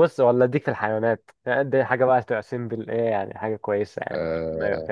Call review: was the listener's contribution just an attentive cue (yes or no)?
no